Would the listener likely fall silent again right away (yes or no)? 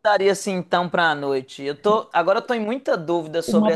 no